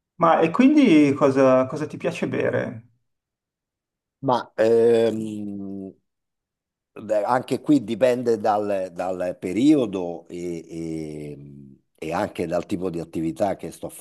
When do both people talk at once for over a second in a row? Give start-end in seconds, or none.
none